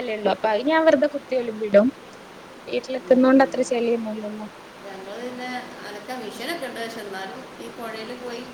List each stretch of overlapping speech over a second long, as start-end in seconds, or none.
none